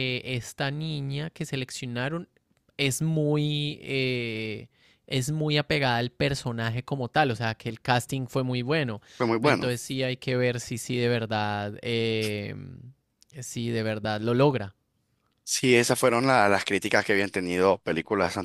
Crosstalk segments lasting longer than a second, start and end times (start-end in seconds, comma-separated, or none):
none